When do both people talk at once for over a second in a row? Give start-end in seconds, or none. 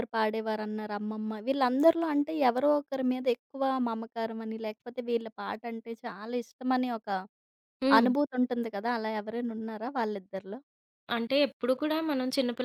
none